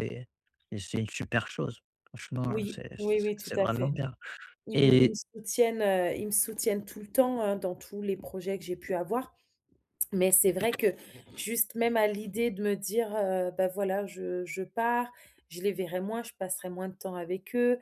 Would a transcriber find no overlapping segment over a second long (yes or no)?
no